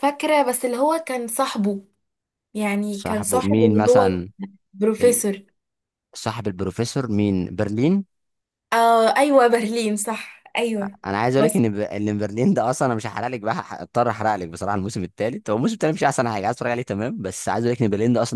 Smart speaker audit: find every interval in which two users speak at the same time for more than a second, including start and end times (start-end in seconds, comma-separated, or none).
2.9-4.2